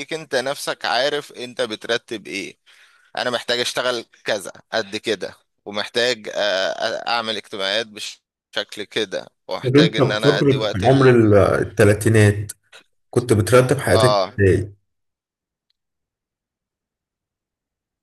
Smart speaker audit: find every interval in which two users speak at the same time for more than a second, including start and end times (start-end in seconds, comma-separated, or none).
9.6-11.2